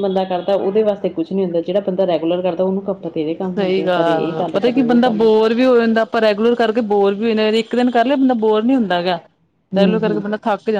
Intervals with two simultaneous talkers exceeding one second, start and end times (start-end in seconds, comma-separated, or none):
3.5-5.3